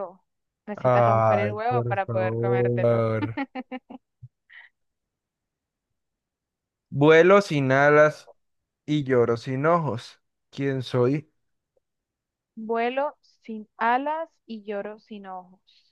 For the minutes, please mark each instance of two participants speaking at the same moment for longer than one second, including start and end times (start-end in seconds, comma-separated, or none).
0.8-3.0